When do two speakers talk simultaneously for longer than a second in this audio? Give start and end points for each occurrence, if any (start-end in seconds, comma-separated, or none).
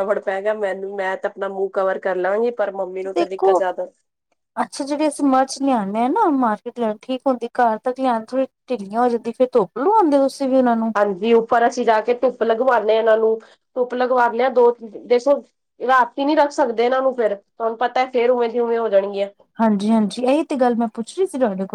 none